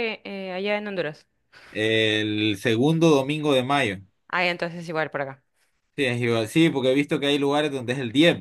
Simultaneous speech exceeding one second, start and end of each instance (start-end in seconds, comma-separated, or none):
none